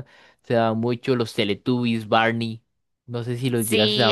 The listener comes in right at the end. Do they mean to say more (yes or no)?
yes